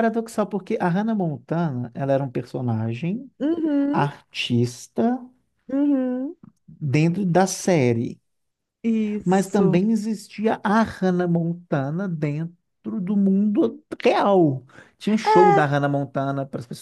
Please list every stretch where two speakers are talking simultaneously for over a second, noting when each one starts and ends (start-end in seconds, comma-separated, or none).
none